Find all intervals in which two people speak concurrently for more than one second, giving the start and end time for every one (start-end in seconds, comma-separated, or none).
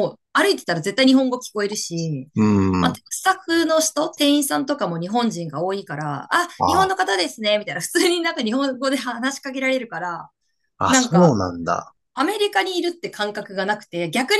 none